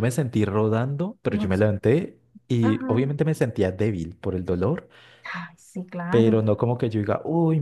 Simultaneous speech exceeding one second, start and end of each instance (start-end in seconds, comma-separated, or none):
none